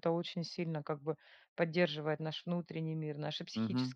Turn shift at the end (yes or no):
yes